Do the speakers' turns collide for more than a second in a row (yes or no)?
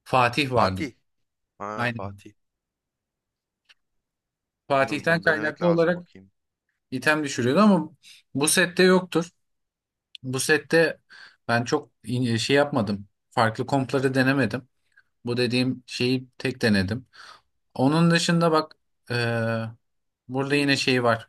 yes